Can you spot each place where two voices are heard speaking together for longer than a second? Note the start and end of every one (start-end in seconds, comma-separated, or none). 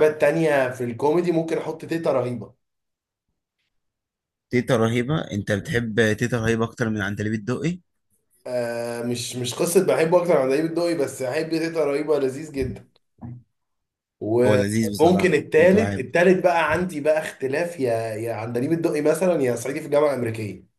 14.4-16.1